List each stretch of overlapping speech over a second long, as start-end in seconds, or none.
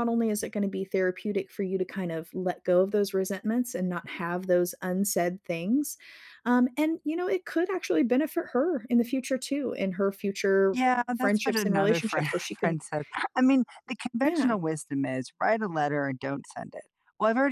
10.7-12.8